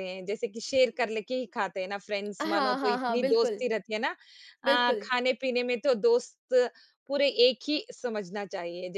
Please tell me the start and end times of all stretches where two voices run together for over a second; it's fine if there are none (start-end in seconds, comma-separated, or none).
2.4-3.6